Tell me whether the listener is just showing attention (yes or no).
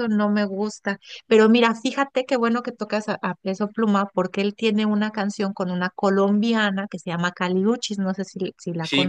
no